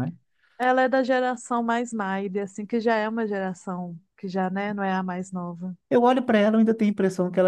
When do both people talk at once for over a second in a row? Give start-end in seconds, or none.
none